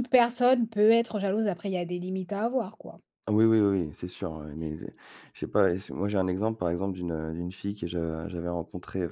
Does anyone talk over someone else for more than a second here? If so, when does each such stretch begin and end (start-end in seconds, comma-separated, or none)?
none